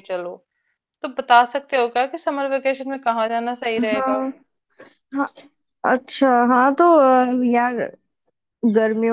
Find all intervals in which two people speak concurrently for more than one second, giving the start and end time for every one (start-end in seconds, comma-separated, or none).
none